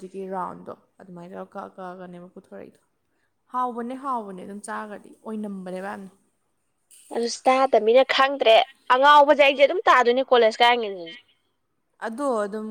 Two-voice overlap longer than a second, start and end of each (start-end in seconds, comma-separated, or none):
none